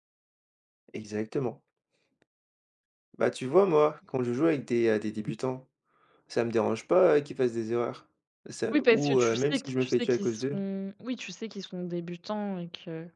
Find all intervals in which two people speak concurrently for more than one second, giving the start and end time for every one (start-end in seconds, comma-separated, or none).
8.7-10.6